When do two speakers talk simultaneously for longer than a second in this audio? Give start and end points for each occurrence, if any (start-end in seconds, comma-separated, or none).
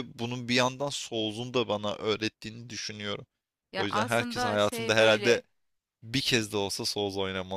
3.8-5.4